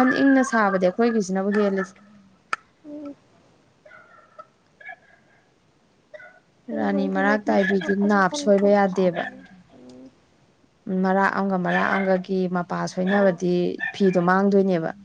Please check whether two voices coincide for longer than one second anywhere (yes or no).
yes